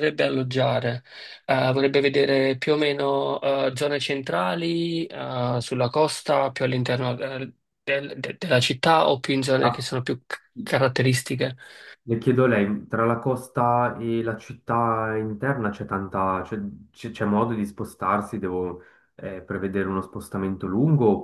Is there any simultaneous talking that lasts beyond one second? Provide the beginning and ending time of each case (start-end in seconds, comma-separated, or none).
none